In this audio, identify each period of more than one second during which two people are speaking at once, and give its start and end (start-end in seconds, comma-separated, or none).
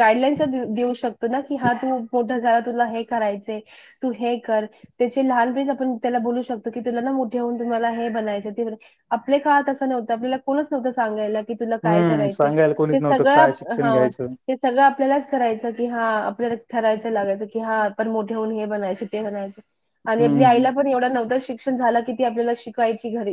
11.9-13.9